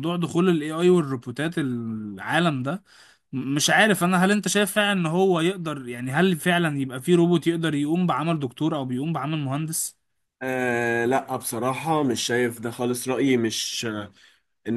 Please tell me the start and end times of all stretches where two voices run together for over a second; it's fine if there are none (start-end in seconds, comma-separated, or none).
none